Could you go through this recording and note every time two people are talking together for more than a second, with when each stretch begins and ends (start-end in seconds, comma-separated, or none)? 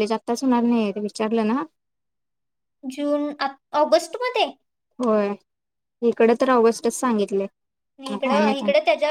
none